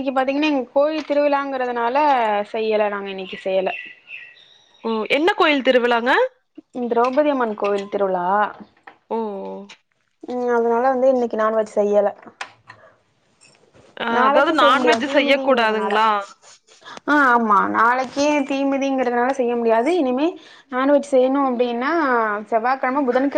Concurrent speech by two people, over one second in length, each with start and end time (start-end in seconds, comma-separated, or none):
14.2-15.9